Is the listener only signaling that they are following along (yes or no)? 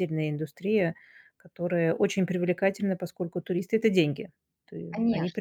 no